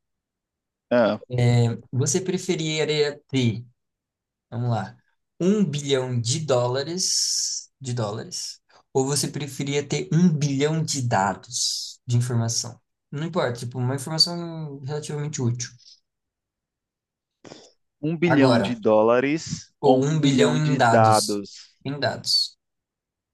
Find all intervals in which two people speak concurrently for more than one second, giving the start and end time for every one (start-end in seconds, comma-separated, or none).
19.8-21.4